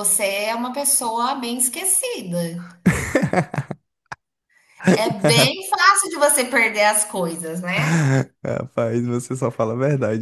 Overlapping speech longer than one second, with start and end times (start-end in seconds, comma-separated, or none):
none